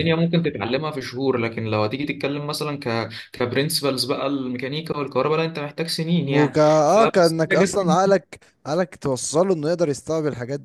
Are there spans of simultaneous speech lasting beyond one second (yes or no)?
yes